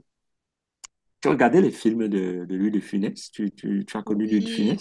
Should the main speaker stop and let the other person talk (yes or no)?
yes